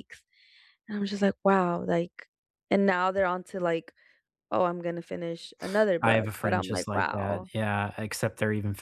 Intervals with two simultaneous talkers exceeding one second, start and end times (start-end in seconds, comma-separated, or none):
6.0-7.5